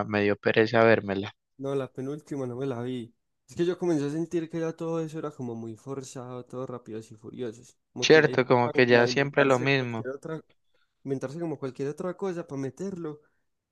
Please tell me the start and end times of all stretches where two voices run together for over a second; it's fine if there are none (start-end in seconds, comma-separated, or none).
8.0-10.1